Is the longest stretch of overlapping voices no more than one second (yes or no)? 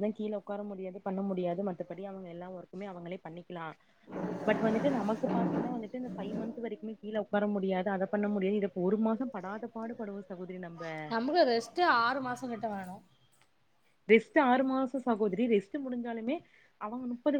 yes